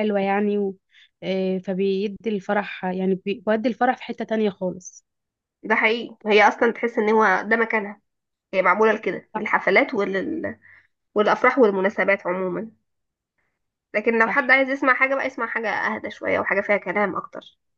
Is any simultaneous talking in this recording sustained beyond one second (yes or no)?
no